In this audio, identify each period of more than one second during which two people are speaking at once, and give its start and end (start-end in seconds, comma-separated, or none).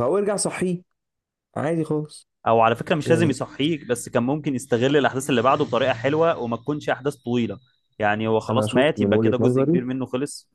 8.5-9.8